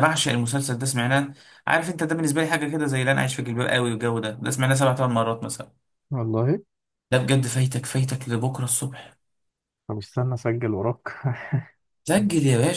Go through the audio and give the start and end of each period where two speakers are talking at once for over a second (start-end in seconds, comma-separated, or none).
none